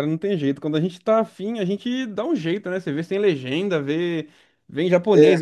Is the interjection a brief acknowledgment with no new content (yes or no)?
yes